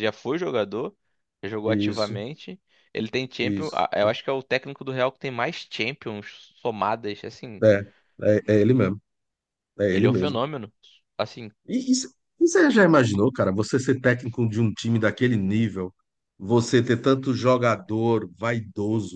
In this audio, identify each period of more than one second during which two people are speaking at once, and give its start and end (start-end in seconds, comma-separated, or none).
none